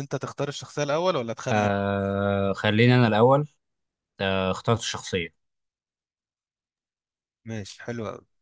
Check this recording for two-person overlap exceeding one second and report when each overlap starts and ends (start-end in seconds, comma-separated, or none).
none